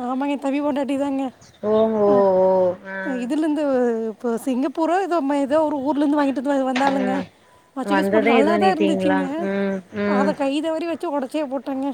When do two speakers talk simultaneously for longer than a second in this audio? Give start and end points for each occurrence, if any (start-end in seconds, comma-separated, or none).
7.9-9.2